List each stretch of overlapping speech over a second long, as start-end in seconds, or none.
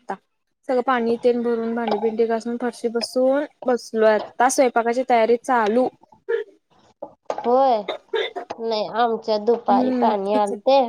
none